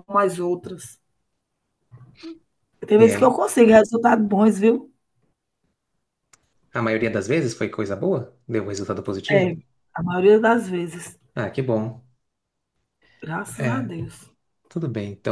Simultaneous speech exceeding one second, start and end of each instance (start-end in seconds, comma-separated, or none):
none